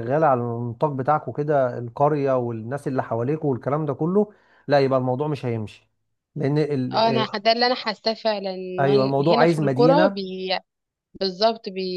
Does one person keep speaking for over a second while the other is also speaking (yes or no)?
yes